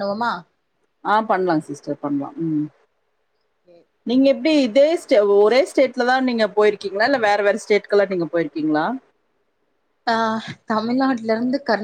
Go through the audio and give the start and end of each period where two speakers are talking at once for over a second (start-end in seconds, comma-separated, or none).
none